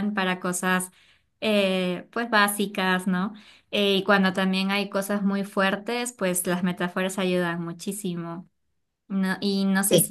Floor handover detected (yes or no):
no